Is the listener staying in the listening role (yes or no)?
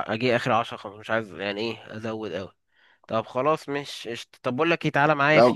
yes